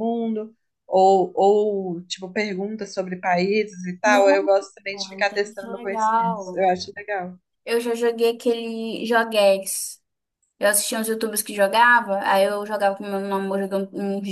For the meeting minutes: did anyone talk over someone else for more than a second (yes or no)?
yes